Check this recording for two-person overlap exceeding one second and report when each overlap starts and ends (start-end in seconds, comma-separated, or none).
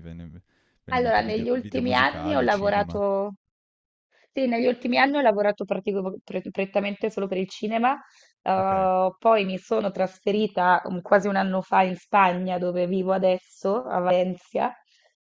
0.9-3.0